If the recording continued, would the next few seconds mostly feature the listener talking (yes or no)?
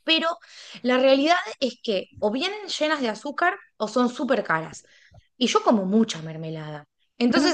no